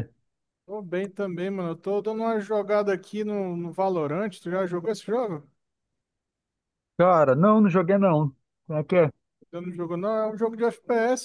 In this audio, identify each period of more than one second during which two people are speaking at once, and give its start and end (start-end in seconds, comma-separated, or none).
none